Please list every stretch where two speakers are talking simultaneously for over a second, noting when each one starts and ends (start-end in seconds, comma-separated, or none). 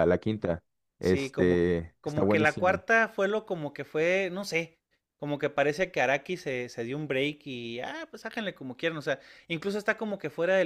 1.0-2.8